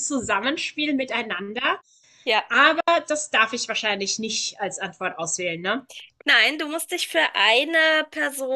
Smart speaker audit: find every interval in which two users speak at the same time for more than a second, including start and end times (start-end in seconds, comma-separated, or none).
none